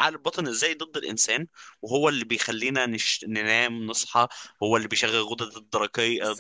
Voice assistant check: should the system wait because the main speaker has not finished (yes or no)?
yes